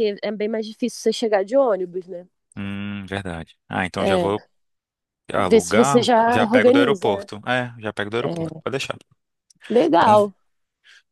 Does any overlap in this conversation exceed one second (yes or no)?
yes